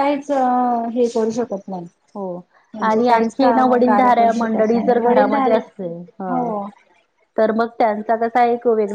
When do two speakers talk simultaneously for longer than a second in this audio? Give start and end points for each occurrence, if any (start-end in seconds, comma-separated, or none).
2.9-5.6